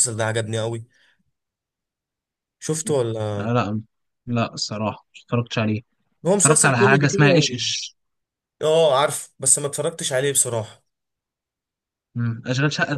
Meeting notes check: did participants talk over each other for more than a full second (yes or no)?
yes